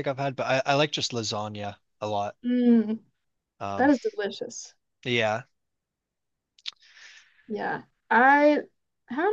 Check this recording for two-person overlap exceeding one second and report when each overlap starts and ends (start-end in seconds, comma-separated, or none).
none